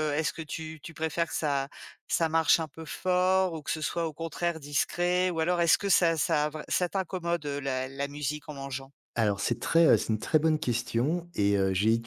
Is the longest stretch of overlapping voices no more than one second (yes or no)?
yes